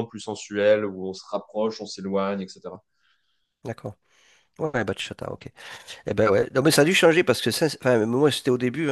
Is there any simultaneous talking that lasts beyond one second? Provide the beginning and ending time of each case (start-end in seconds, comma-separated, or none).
none